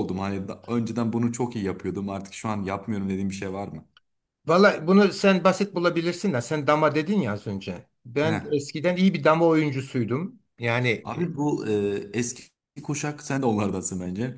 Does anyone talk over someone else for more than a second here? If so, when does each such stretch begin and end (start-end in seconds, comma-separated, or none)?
none